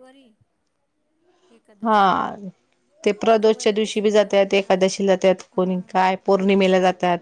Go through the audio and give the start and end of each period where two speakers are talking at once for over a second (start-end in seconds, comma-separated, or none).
3.3-4.8